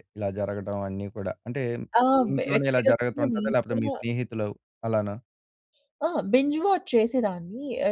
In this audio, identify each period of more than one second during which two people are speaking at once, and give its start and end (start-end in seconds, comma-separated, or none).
2.1-3.9